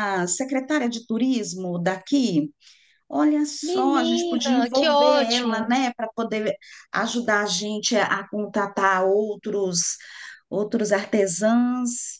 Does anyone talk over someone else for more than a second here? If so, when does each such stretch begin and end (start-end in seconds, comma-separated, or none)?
3.6-5.8